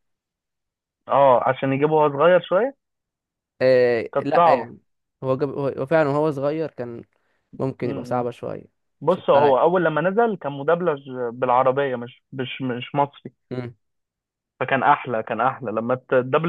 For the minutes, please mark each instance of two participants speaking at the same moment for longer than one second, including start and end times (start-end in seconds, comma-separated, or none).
none